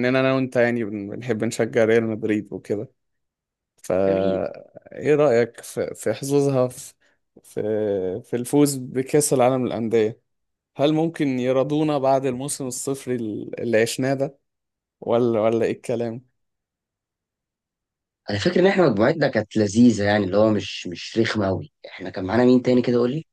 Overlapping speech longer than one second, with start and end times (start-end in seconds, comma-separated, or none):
none